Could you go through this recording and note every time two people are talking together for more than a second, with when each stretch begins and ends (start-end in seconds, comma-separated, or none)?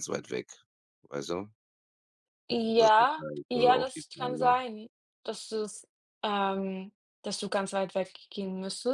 2.8-4.5